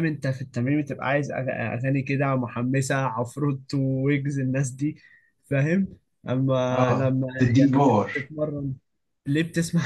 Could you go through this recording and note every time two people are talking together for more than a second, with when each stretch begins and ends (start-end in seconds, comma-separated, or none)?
6.7-8.3